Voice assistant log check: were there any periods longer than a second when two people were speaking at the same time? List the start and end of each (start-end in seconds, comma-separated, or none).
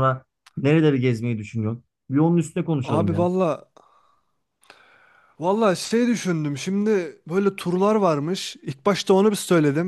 none